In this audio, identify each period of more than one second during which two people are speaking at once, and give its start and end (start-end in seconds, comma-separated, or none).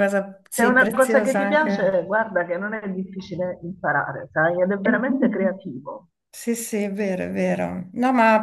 0.6-2.0